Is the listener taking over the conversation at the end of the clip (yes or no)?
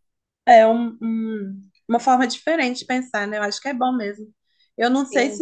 no